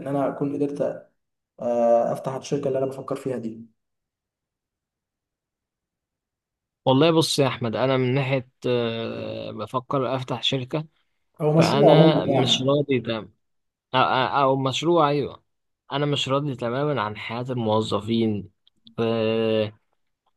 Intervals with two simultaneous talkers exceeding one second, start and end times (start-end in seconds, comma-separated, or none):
11.6-12.8